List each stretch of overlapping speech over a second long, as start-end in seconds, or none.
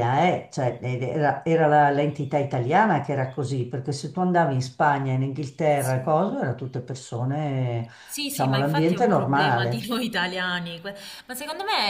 8.3-9.9